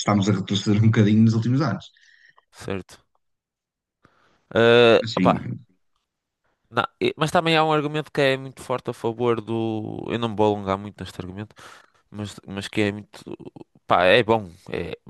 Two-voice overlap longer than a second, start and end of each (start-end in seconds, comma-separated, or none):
none